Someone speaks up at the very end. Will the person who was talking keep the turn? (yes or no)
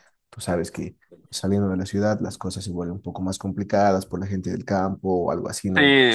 no